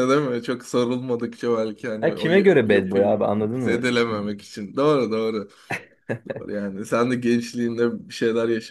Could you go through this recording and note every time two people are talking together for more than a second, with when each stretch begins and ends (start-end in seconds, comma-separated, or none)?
2.0-4.3